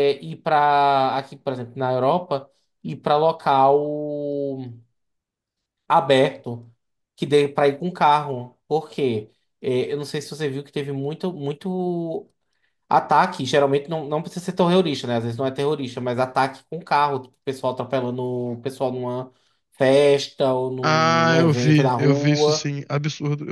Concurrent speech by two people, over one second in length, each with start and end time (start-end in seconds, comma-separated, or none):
20.8-22.7